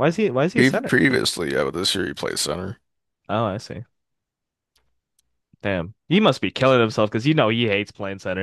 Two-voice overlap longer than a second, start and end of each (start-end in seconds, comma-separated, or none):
none